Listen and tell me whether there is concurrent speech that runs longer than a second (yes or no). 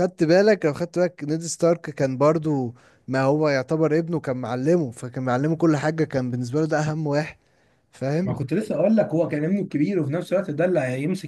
no